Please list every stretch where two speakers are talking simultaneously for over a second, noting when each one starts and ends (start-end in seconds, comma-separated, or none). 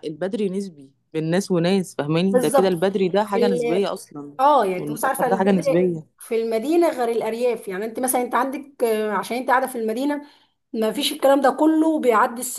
2.3-3.9, 4.8-6.2